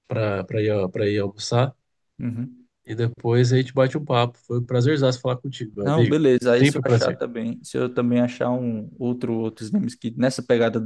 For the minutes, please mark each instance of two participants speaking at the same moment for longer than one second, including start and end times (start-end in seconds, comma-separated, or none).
5.8-7.2